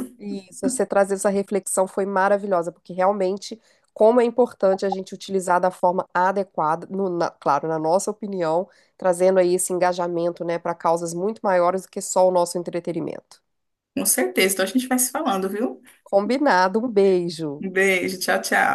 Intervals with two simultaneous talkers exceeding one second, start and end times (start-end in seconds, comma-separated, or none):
none